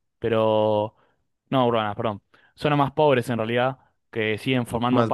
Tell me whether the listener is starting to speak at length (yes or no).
no